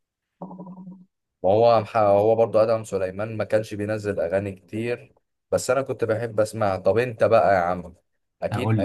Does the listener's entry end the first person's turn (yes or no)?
no